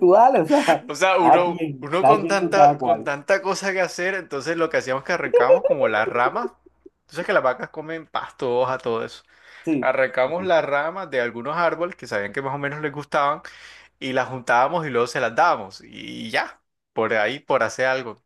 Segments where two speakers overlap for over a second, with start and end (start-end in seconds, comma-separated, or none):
1.2-3.1